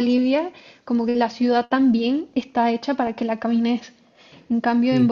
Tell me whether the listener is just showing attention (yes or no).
yes